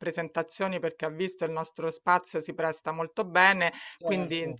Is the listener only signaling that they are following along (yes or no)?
yes